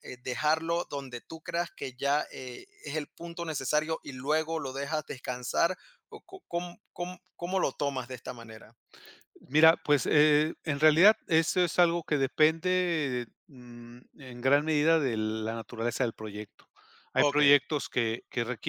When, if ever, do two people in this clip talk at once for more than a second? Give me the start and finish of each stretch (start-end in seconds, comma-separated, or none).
none